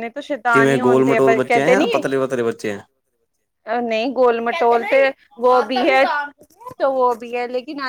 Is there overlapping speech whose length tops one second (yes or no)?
yes